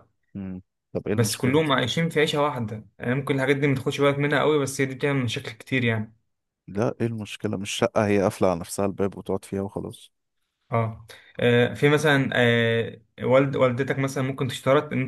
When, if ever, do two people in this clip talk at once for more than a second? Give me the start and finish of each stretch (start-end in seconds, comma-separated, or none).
none